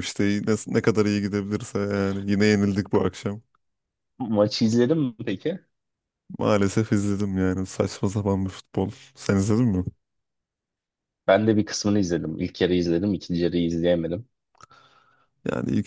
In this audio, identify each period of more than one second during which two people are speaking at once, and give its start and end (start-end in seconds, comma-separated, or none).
none